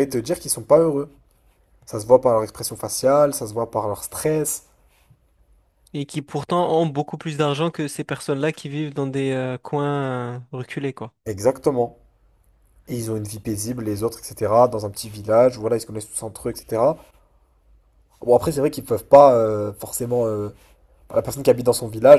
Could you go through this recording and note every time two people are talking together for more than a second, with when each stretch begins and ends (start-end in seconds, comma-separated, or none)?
none